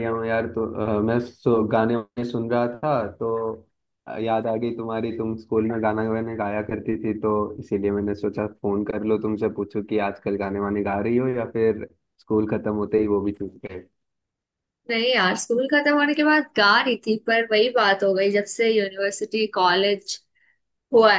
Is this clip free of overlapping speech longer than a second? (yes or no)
yes